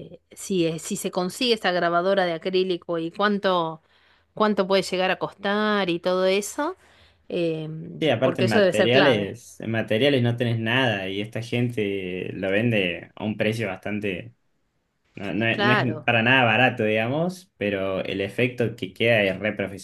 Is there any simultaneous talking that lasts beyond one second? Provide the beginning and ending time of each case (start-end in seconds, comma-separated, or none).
8.0-9.3